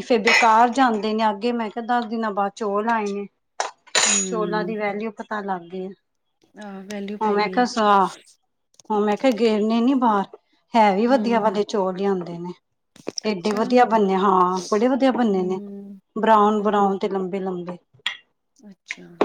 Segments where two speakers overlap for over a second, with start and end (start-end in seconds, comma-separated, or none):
none